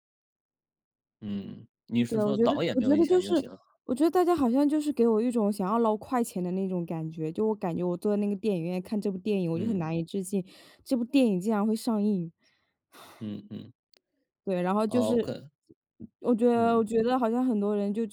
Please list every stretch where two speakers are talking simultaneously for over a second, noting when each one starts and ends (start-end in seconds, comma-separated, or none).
2.1-3.3